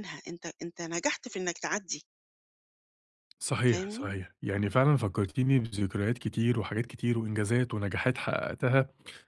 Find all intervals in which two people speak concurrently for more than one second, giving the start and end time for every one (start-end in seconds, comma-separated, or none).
none